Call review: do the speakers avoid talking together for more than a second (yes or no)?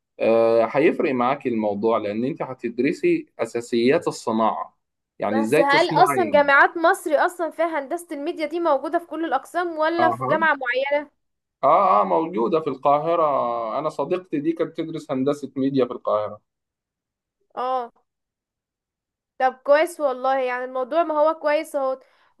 no